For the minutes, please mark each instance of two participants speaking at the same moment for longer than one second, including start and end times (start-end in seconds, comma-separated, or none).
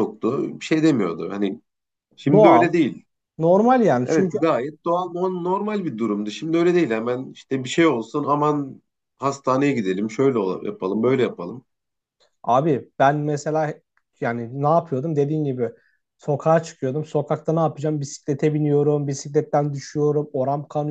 none